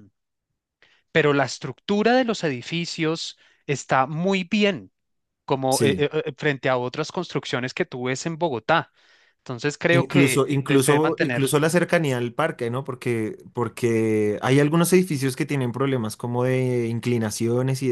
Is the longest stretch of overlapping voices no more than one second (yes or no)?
no